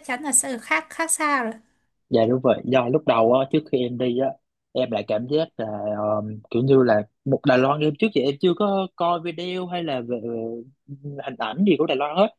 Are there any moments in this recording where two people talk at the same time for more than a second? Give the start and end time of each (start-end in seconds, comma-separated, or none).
none